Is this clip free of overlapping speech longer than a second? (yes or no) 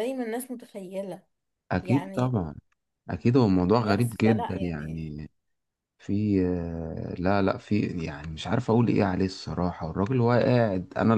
no